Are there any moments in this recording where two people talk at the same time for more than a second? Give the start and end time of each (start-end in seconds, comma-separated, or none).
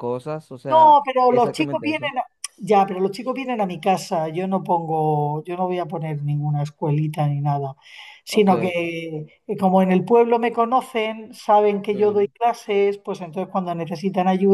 0.7-2.1